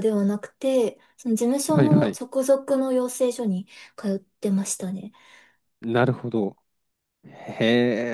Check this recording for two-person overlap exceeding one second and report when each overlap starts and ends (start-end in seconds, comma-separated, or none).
none